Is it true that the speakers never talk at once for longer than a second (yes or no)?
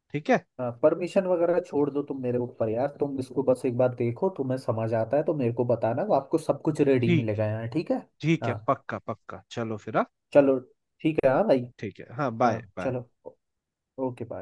yes